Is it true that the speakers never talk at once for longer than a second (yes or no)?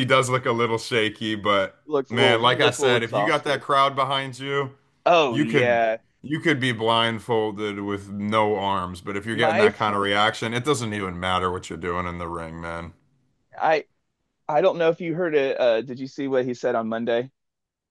no